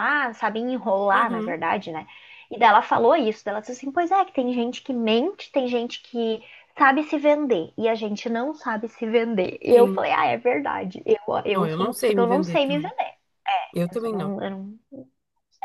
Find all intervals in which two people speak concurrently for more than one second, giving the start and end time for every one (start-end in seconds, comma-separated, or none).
11.5-12.9